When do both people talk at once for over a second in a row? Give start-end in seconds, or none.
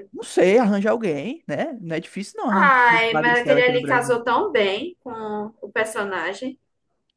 2.5-4.2